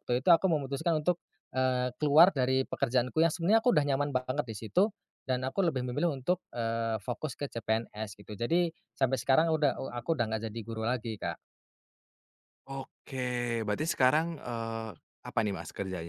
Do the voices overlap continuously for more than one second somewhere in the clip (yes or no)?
no